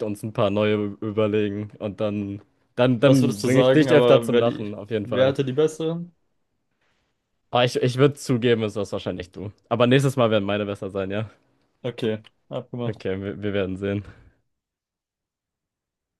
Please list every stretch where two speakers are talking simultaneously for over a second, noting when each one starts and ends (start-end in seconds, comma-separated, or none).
3.0-5.3